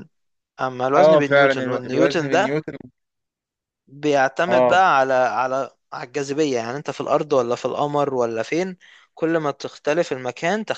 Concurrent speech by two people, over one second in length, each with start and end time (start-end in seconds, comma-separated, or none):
1.0-2.6